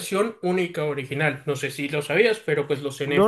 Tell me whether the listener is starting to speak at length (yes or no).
yes